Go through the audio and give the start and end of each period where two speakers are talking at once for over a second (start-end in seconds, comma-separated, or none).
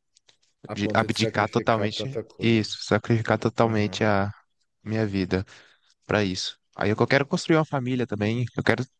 0.7-2.8